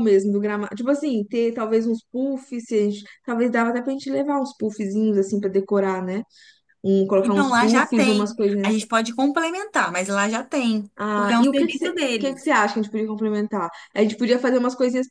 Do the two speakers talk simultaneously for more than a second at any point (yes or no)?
yes